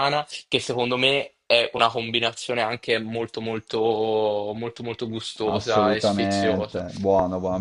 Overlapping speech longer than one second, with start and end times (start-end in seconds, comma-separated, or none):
5.4-6.8